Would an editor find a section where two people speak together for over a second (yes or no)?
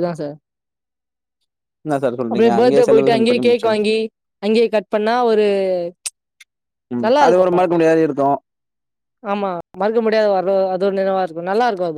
yes